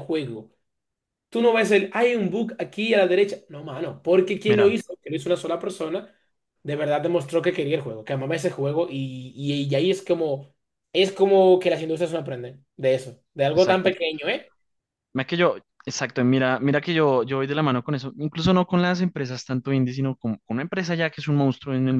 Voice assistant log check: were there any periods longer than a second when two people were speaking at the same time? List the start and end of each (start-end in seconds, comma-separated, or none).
none